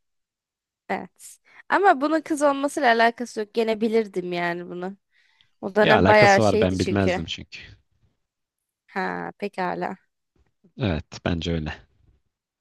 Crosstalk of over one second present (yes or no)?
yes